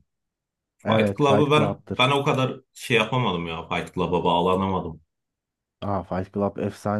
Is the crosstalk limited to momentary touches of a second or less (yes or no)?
no